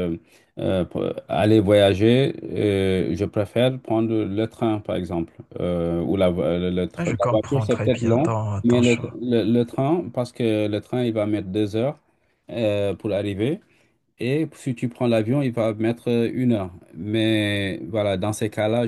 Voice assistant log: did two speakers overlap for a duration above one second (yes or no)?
yes